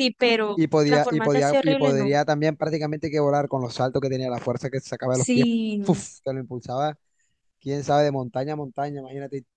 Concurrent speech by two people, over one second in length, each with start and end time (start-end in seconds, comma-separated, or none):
0.5-2.1